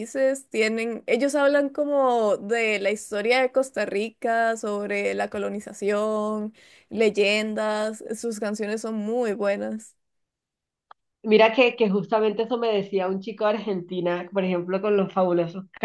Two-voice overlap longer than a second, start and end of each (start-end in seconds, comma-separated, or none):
none